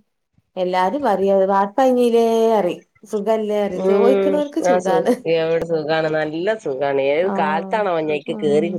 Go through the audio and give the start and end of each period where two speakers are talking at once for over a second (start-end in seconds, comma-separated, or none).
none